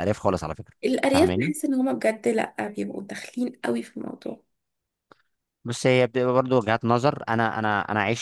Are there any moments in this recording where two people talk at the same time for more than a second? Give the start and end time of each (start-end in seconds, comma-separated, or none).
none